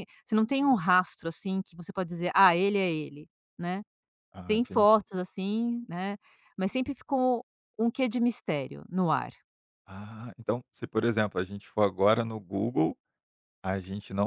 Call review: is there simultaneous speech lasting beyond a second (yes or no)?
no